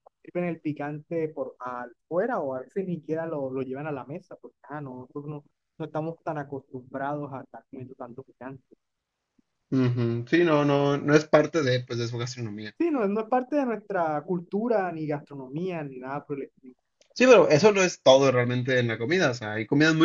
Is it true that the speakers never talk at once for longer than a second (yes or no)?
yes